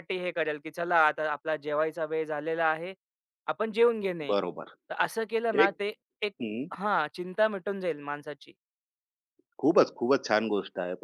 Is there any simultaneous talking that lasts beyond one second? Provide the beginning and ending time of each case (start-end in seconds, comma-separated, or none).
none